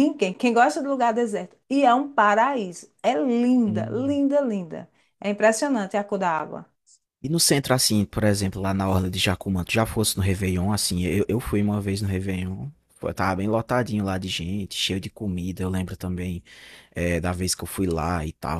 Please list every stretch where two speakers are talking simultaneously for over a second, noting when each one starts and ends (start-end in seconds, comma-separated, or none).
none